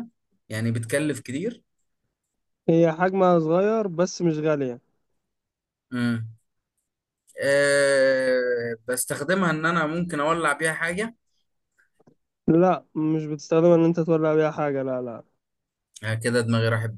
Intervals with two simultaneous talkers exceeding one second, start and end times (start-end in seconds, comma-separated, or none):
none